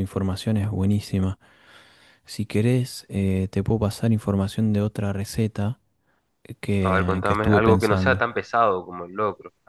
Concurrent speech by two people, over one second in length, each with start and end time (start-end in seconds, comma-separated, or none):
6.8-8.3